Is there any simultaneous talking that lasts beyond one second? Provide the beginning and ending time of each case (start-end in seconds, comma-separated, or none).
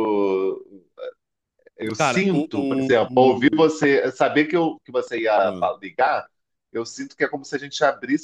2.0-3.7